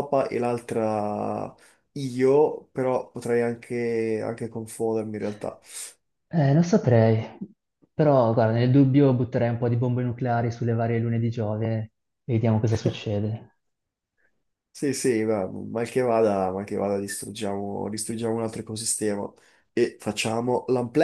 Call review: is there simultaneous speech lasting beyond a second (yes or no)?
no